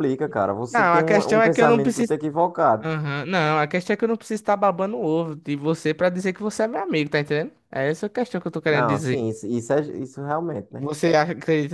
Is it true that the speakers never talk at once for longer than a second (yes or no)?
no